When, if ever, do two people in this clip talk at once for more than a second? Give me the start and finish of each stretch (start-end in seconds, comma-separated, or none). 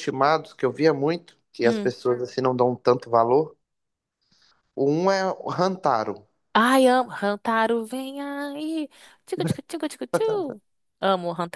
none